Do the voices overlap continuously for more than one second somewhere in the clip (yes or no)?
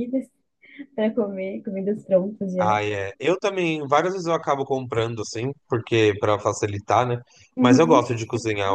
no